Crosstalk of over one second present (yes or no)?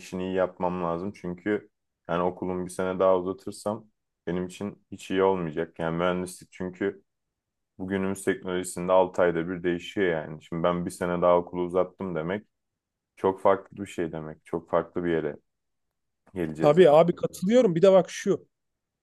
no